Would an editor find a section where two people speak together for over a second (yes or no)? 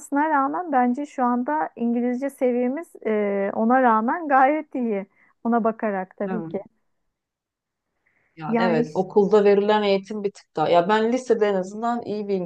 no